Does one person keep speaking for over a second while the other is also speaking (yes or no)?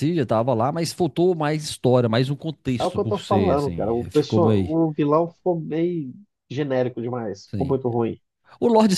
yes